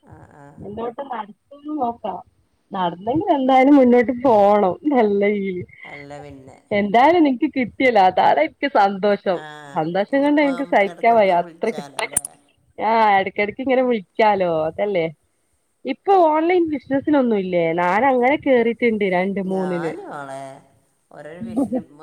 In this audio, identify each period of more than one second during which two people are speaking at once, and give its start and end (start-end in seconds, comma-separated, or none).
10.1-11.9